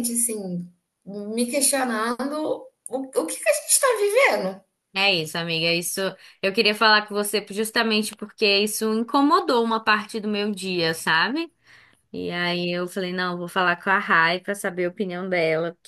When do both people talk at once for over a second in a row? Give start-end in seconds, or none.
none